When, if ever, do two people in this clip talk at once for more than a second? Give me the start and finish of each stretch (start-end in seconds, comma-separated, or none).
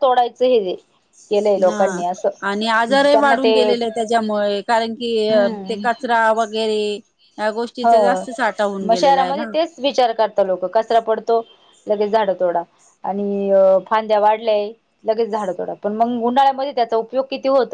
none